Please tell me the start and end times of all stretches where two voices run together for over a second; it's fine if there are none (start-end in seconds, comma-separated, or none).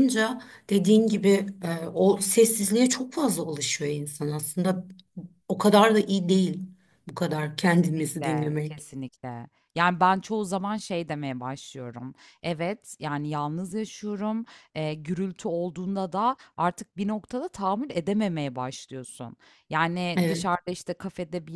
7.6-8.8